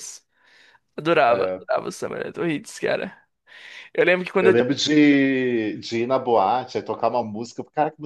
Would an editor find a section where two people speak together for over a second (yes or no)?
no